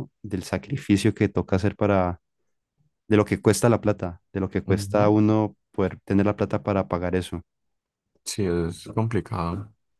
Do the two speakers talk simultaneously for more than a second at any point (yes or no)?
no